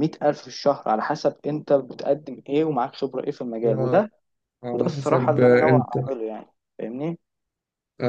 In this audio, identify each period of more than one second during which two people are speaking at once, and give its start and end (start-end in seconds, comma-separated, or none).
4.7-6.0